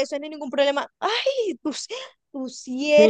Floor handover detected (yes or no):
yes